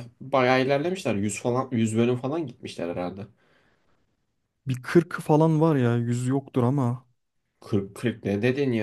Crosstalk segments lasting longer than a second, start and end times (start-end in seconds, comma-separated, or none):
none